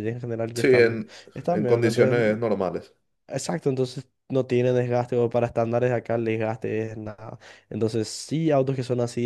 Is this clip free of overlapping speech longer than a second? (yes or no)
no